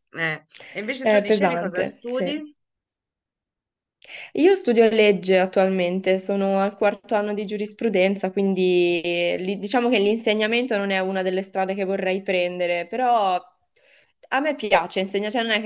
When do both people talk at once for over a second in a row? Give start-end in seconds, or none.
1.0-2.3